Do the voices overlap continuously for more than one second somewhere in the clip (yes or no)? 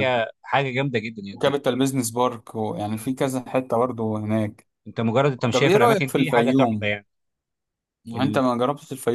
yes